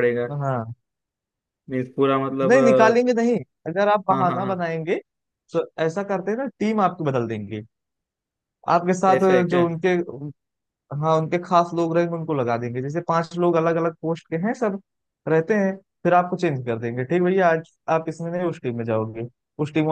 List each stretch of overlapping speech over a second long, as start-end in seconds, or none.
none